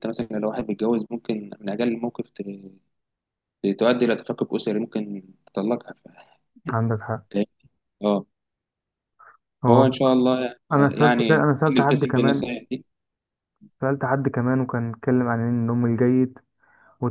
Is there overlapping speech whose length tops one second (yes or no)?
yes